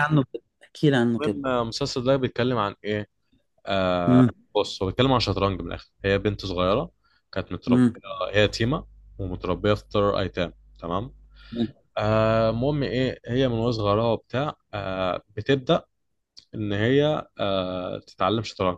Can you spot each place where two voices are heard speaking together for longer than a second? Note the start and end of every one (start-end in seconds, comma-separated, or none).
none